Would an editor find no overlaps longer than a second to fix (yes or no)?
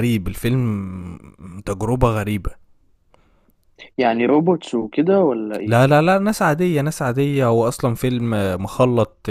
yes